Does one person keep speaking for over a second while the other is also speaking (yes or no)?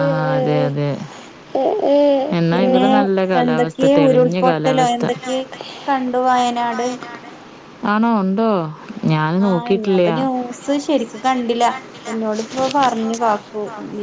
yes